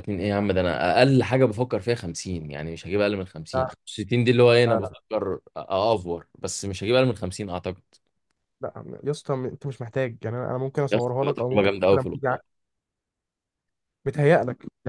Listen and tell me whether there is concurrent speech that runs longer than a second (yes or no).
yes